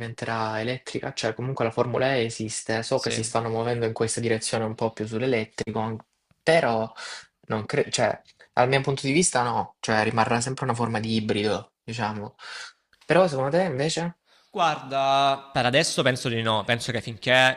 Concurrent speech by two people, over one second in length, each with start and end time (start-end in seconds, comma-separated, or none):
none